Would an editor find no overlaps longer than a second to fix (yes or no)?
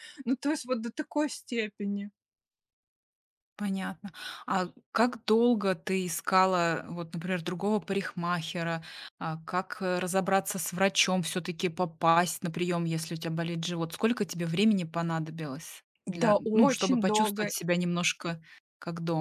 no